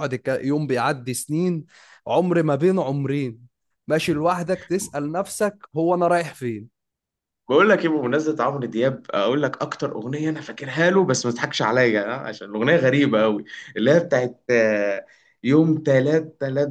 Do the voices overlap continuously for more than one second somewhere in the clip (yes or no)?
no